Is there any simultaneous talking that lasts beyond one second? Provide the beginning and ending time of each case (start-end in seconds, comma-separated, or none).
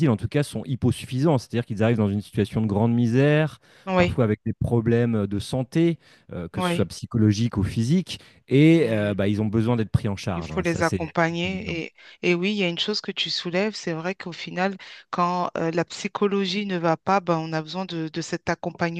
10.3-11.8